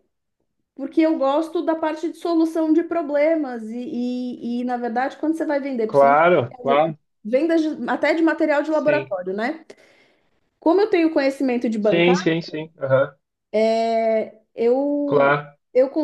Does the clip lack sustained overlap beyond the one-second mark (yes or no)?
yes